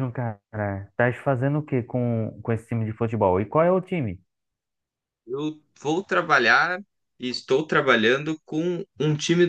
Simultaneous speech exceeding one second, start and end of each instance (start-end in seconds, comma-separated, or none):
none